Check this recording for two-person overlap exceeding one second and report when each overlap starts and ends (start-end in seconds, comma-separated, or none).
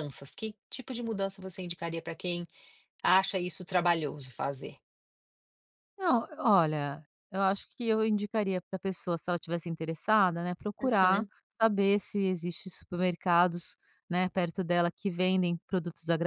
none